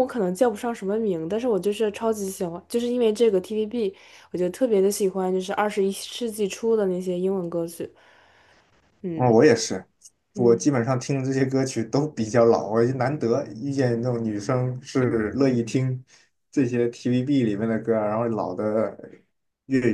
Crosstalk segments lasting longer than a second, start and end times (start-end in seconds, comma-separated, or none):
none